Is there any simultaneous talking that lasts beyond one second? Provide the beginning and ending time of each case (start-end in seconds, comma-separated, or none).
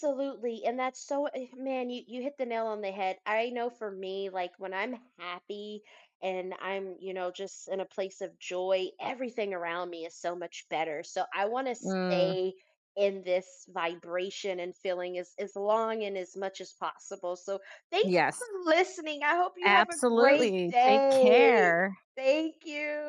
19.6-21.7